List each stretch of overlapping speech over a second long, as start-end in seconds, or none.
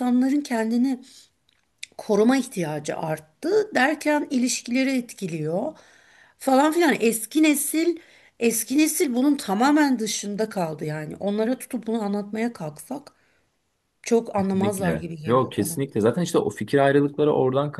14.4-15.8